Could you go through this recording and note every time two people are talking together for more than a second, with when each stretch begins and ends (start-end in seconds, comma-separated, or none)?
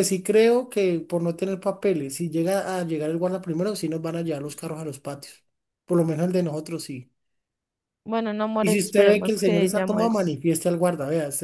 8.6-10.4